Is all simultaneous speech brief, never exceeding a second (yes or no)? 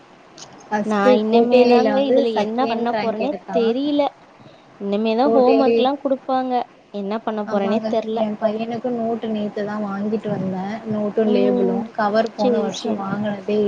no